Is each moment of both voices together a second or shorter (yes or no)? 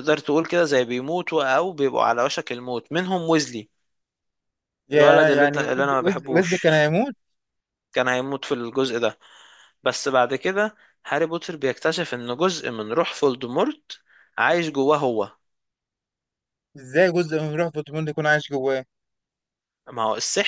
no